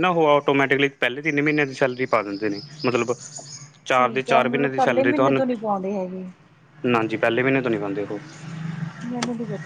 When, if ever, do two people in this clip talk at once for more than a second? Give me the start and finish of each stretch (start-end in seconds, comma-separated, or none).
3.9-5.4